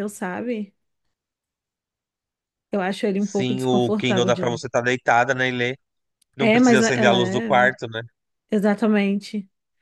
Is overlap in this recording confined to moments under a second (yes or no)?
no